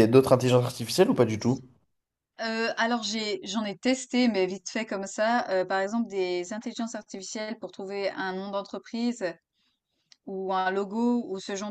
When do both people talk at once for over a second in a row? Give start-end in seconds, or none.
none